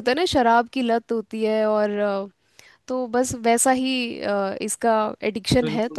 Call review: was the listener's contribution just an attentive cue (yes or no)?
no